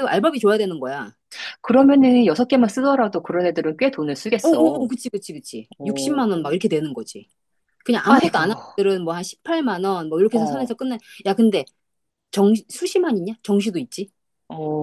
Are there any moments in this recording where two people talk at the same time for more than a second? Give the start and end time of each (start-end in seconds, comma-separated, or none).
none